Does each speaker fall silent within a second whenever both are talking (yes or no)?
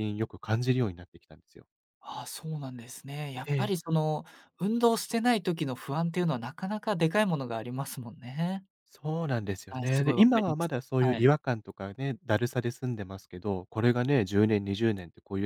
no